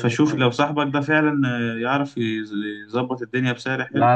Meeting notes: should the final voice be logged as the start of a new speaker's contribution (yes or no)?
yes